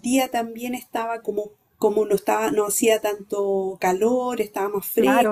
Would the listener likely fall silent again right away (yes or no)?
no